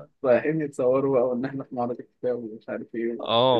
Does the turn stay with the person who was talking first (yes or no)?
no